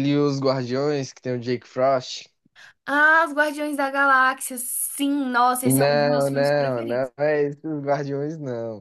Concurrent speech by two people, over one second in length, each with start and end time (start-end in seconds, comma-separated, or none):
5.6-7.1